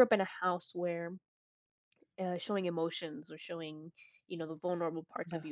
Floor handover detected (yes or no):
no